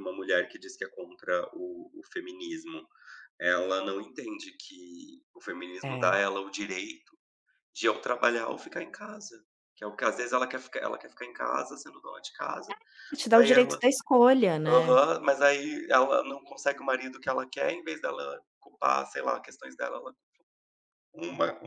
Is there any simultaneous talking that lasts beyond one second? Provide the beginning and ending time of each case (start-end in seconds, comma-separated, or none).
none